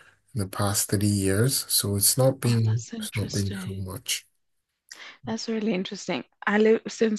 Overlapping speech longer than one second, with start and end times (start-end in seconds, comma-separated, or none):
2.5-3.8